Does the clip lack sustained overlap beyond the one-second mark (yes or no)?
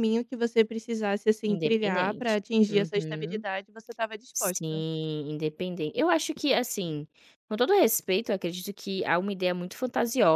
no